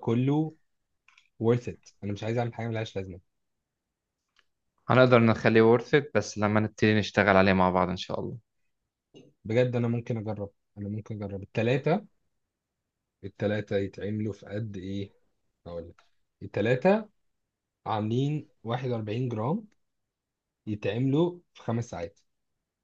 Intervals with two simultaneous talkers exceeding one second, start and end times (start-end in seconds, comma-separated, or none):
none